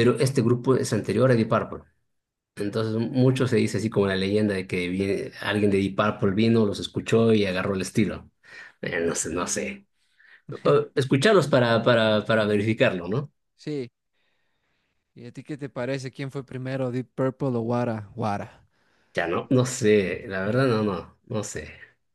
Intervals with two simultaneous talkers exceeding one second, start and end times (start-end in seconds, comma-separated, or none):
none